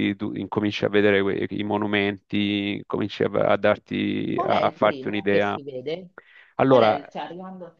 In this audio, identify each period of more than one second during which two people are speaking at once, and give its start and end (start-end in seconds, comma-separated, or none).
4.3-5.6